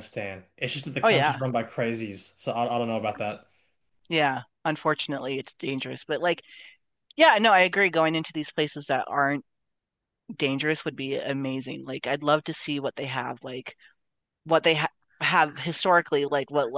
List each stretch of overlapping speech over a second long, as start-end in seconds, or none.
none